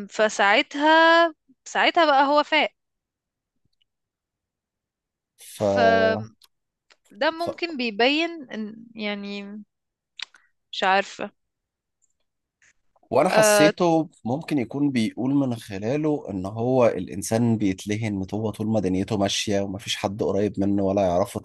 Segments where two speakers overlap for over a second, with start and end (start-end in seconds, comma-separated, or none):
none